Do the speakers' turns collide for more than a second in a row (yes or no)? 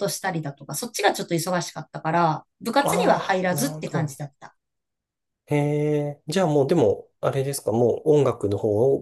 yes